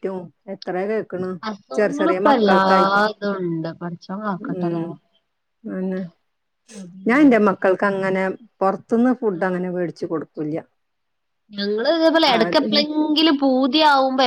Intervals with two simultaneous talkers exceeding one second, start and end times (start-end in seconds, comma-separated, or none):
1.8-3.0